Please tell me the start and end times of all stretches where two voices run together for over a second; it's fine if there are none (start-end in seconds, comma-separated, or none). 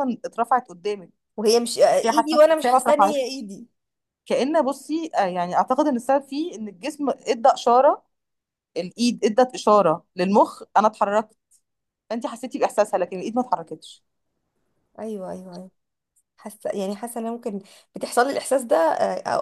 1.9-3.5